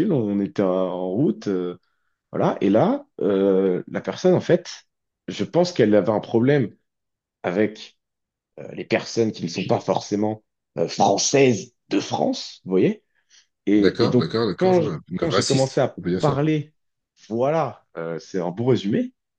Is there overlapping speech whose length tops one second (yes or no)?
yes